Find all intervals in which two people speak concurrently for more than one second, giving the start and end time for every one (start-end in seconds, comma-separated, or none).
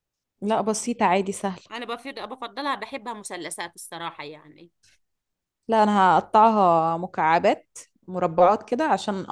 none